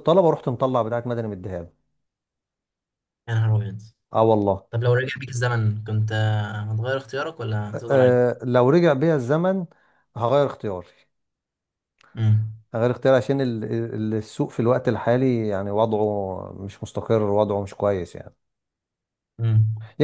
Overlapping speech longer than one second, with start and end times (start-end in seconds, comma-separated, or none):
none